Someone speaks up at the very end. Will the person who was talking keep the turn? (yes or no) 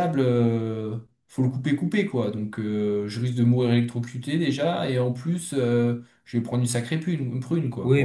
no